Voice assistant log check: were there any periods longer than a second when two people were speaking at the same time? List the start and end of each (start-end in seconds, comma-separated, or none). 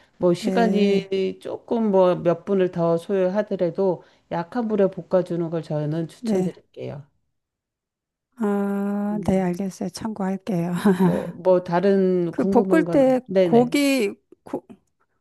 12.3-13.8